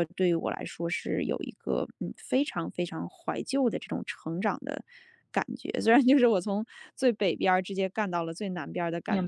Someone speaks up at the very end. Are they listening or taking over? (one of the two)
taking over